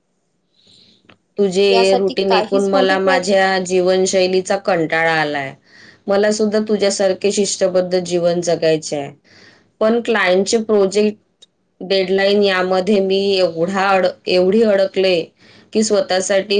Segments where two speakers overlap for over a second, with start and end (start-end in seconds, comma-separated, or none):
1.7-3.2